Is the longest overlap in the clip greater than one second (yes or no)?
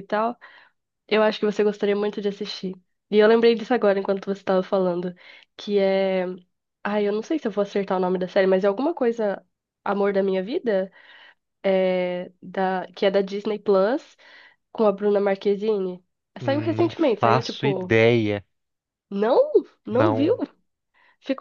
yes